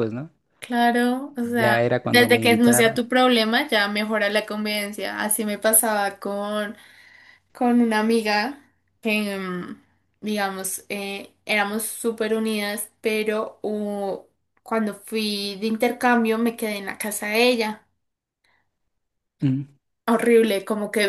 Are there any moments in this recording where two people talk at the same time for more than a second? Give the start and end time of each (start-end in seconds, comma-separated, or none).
1.6-3.1